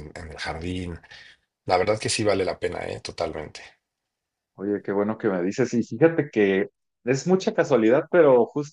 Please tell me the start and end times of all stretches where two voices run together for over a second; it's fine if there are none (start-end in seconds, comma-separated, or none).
none